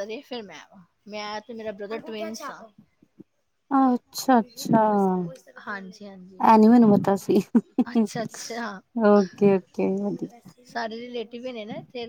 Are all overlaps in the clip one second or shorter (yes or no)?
yes